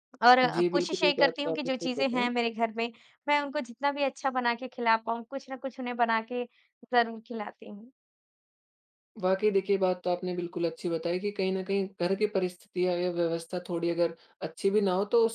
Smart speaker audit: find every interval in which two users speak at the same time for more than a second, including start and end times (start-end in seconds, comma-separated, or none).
0.5-2.3